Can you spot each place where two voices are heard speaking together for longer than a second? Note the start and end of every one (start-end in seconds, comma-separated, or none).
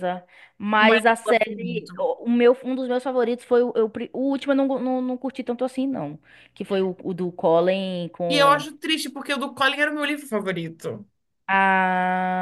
0.8-2.0